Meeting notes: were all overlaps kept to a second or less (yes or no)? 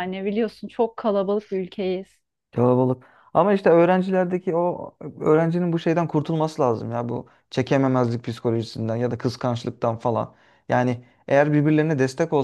yes